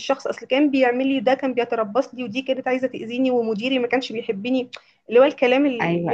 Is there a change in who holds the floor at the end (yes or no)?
yes